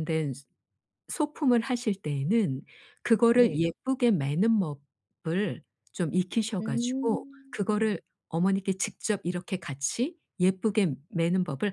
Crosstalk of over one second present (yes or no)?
yes